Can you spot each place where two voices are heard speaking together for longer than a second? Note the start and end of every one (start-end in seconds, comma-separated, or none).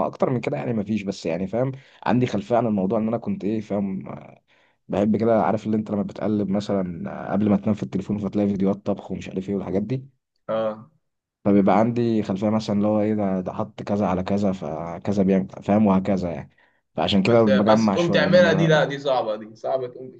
17.2-18.8